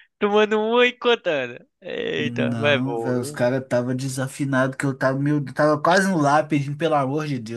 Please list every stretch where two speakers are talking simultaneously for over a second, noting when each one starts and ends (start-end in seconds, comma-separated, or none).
2.1-3.4